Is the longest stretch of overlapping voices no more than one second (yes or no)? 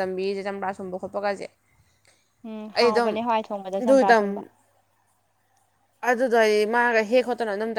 yes